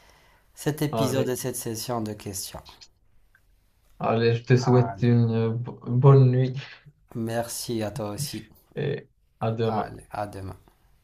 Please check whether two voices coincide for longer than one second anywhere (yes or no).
no